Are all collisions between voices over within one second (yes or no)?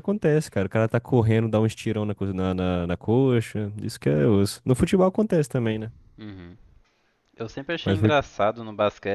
yes